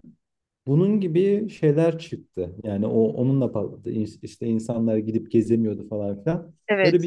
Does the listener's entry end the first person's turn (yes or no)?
no